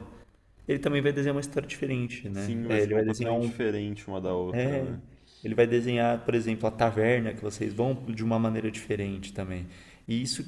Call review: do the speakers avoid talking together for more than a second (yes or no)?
no